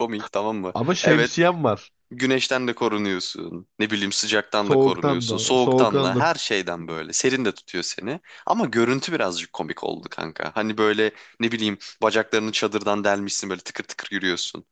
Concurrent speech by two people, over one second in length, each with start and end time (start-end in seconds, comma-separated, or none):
4.6-6.3